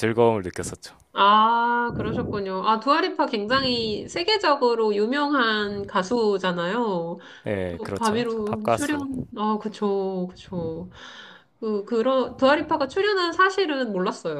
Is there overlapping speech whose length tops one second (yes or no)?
yes